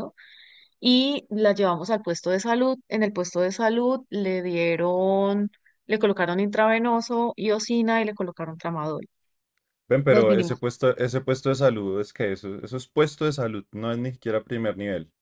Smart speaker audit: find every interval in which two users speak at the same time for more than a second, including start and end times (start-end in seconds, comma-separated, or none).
none